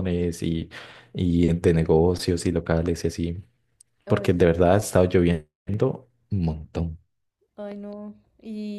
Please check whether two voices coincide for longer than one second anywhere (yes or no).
no